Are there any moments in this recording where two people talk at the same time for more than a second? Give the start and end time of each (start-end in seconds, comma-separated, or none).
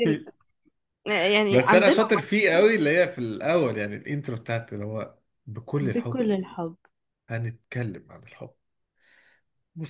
none